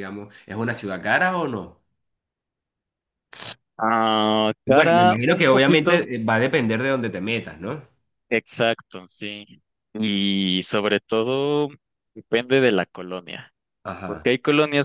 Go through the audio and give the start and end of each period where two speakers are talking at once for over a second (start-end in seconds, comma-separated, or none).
4.7-6.0